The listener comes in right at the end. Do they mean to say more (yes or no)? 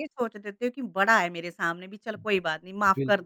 yes